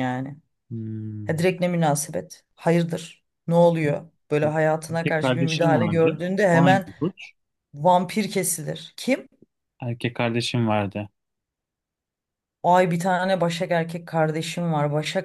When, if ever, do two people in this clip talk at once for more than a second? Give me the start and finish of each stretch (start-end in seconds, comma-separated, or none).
4.9-6.9